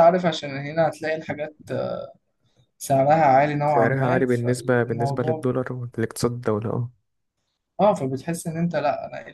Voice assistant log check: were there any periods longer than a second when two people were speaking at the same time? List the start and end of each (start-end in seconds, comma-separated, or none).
3.6-5.5